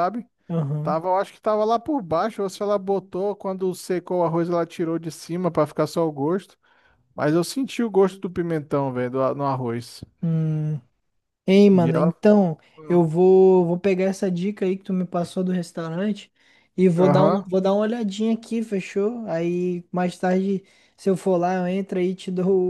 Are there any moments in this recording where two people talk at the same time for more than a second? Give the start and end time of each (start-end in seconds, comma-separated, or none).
none